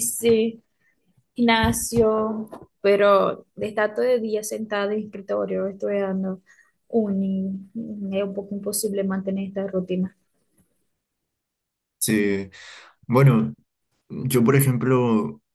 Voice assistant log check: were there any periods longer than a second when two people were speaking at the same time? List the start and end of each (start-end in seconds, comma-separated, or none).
none